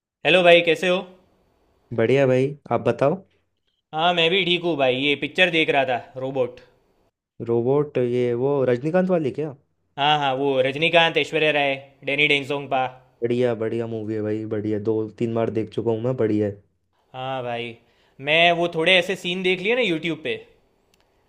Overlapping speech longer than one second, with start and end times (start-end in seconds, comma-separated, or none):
none